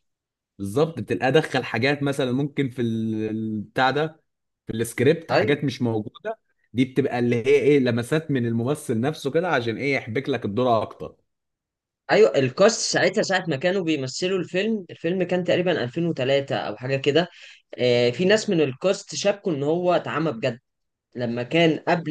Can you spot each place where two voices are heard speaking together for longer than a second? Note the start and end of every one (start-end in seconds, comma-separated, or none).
none